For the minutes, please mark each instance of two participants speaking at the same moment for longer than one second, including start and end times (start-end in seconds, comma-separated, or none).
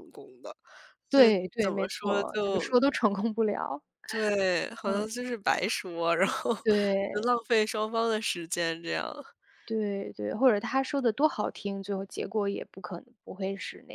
1.1-2.6